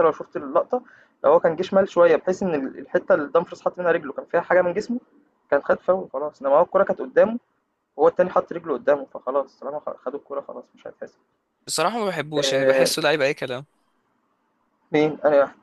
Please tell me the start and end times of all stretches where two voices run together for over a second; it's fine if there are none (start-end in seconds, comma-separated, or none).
none